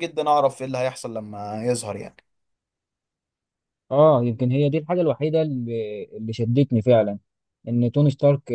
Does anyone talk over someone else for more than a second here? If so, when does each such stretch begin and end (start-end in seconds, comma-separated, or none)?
none